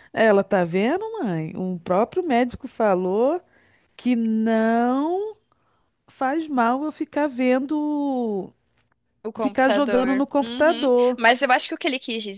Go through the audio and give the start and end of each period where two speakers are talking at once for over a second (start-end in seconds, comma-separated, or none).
9.4-11.2